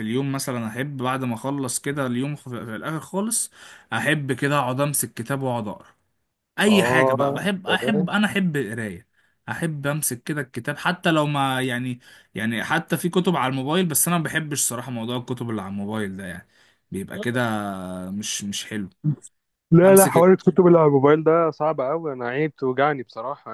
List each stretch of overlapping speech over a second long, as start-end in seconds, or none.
6.7-8.1